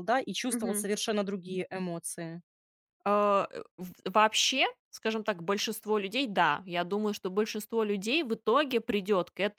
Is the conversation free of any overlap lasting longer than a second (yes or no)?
yes